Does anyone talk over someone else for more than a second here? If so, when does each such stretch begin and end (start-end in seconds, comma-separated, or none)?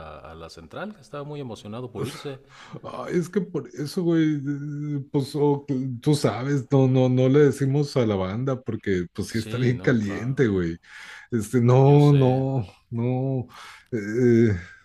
9.3-10.6